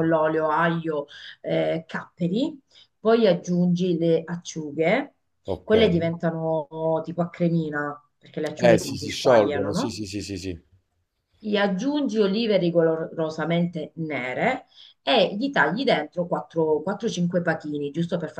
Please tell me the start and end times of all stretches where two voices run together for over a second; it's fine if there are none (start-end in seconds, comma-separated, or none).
8.6-10.0